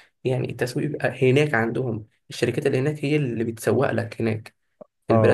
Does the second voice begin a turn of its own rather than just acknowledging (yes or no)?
yes